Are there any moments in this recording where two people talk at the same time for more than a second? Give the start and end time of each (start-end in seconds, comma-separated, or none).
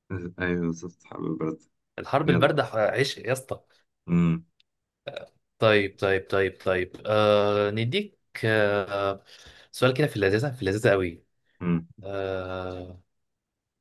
none